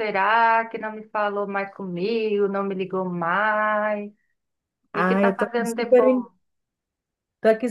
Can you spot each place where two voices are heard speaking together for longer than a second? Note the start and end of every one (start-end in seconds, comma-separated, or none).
4.9-6.2